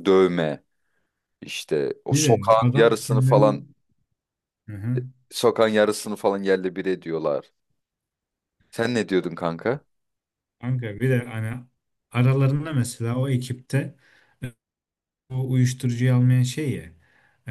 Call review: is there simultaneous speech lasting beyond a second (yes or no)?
yes